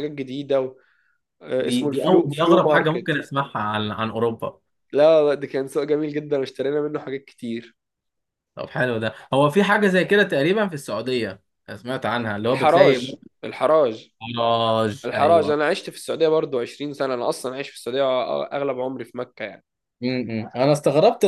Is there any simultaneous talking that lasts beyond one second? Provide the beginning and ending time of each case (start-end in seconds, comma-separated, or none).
1.6-3.1